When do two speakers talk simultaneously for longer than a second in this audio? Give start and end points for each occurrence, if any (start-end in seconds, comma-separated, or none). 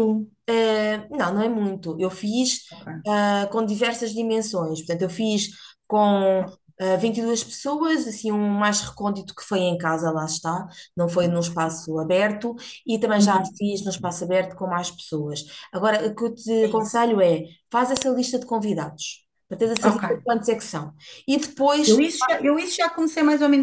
none